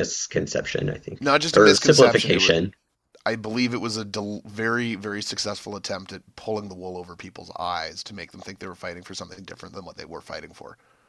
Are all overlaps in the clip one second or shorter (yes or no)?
no